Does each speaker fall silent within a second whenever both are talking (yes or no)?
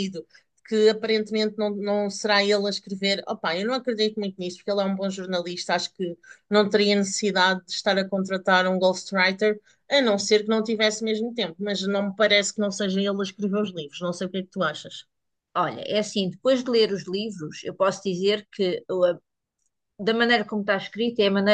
yes